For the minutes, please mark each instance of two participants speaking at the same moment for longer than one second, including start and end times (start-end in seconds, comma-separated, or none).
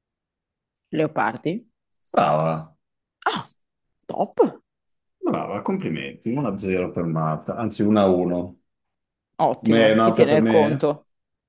9.6-10.9